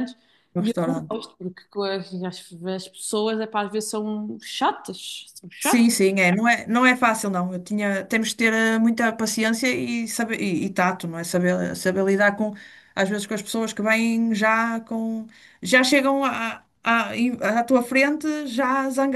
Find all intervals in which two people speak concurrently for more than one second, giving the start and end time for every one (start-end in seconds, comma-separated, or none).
none